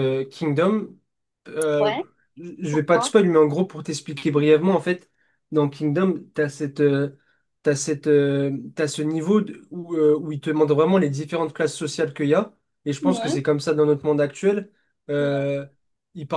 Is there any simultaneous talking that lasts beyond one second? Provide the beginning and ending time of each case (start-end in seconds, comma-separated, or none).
none